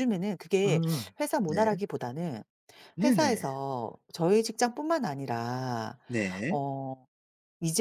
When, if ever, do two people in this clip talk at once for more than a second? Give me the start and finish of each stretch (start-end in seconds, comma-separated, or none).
none